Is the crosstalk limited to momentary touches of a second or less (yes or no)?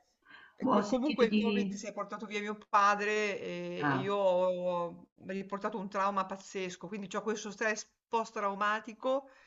no